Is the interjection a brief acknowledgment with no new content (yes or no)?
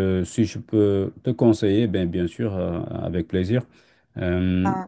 yes